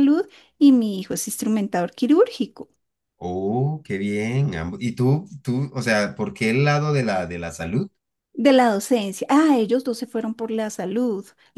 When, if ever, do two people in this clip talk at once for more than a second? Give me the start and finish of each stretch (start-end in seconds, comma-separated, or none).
none